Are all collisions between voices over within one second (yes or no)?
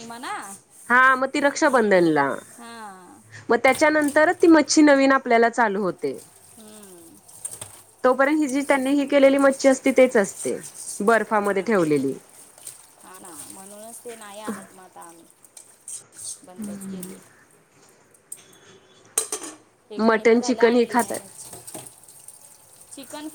no